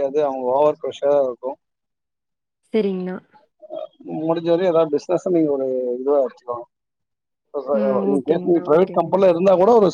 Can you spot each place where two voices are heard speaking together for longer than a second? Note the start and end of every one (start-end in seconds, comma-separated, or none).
7.8-9.1